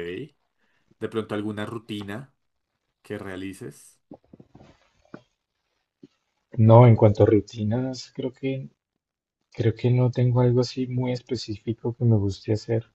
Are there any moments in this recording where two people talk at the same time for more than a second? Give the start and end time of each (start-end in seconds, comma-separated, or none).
none